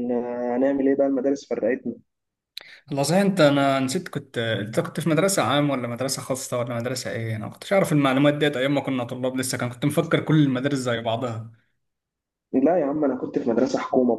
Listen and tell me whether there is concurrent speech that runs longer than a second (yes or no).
no